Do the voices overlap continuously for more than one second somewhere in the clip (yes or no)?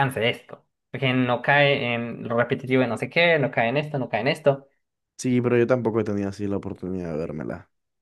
no